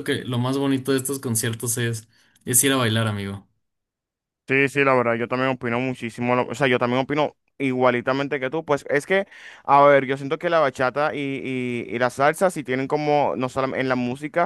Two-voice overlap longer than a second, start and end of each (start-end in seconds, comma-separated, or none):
none